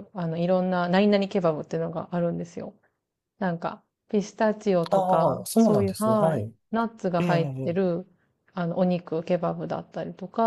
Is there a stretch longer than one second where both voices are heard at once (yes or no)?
yes